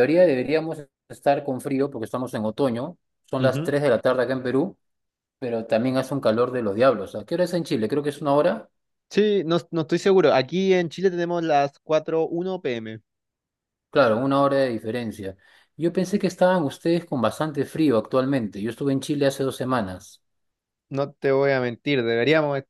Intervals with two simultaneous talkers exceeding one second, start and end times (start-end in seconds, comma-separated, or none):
none